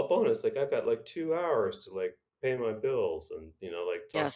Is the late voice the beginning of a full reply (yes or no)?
yes